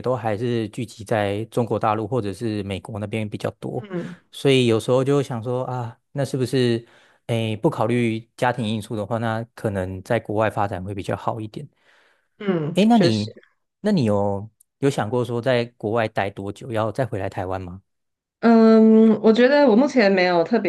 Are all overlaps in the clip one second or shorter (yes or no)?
yes